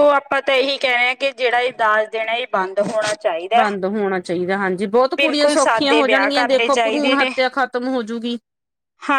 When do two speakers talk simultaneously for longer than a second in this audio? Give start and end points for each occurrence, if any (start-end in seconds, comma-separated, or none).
5.2-6.7